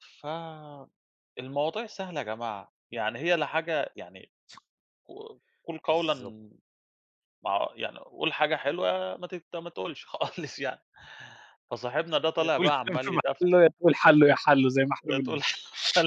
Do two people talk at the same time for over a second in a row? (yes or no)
yes